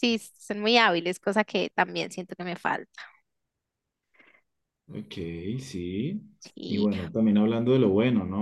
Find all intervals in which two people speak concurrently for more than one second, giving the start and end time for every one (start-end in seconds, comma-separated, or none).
none